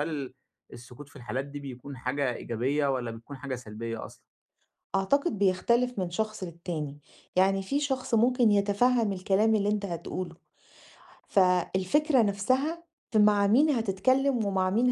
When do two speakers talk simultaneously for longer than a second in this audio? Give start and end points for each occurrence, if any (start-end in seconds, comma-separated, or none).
none